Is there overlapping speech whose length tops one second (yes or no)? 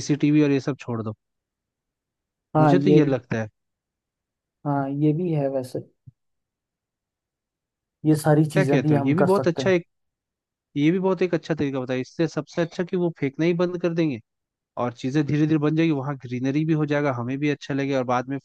yes